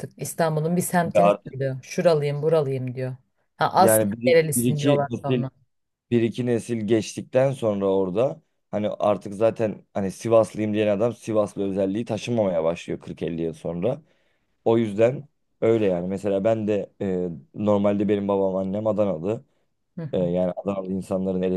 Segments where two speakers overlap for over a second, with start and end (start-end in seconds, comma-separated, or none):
3.8-5.5